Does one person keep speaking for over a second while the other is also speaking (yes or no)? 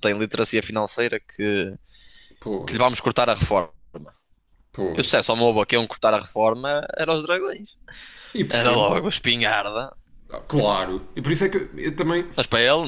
no